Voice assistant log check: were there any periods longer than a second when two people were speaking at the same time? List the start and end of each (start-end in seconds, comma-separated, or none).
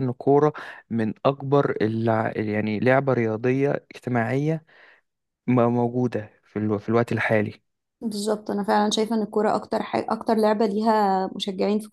none